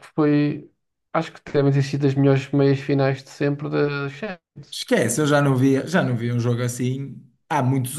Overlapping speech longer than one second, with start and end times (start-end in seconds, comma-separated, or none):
none